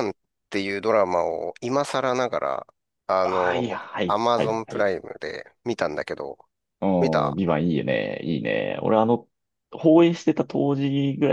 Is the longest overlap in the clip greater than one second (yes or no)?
yes